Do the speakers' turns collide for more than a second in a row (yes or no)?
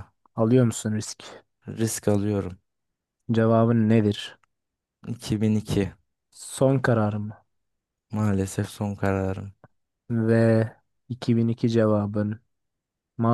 no